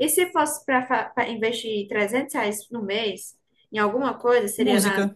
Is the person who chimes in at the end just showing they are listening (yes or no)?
yes